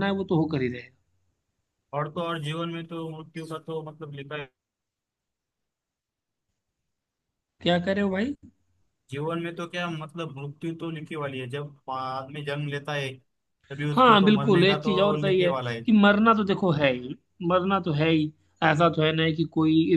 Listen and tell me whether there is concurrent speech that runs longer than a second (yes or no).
yes